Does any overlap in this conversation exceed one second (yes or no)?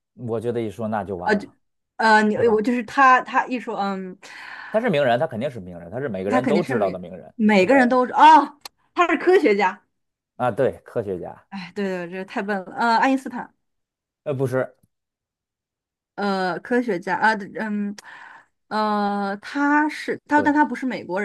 yes